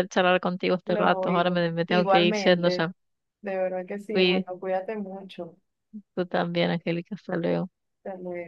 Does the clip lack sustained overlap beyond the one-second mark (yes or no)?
no